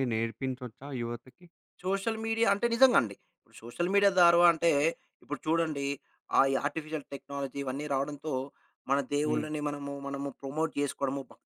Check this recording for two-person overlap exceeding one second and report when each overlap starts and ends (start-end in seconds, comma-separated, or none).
none